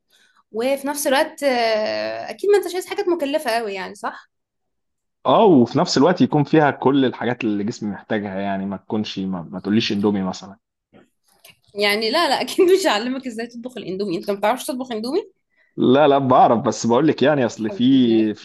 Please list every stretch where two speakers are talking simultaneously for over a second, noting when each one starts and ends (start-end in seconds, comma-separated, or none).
none